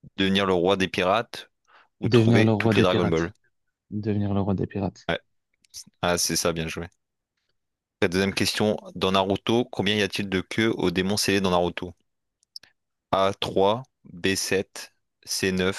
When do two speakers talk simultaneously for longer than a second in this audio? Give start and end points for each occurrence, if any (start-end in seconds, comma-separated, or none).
2.0-3.3